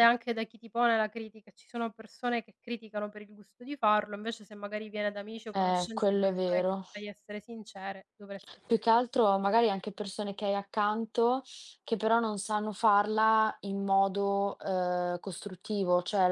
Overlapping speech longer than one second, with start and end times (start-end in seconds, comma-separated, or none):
5.5-6.8